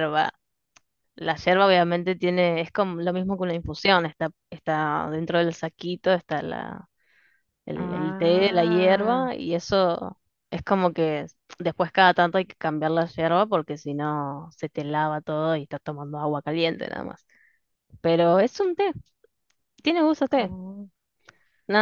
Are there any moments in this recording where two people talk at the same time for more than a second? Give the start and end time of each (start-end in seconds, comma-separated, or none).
7.8-9.2